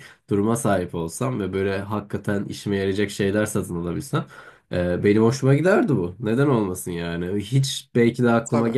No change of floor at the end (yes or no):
yes